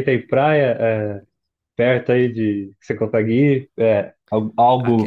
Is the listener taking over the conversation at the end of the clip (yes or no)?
no